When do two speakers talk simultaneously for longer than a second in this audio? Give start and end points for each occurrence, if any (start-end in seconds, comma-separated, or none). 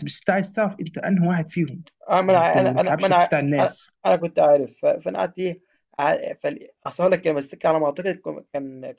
2.3-3.9